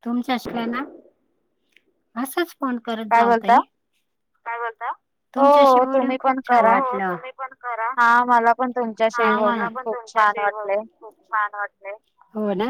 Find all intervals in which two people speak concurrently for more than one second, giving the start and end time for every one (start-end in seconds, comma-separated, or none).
5.4-6.7